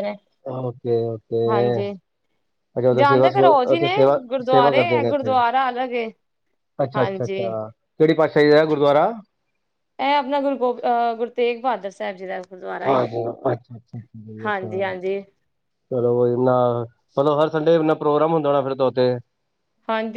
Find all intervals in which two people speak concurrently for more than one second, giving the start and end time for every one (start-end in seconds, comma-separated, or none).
3.0-5.3